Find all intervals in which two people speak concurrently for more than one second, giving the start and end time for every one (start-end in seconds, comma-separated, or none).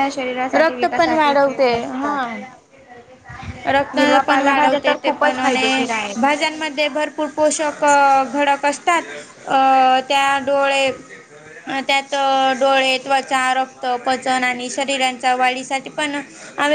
0.6-2.1, 3.9-5.8